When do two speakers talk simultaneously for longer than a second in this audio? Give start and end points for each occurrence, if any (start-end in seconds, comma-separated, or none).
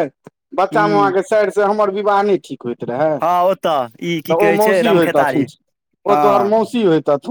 3.2-5.4